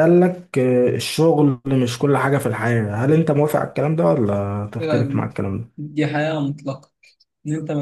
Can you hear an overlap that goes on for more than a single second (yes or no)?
no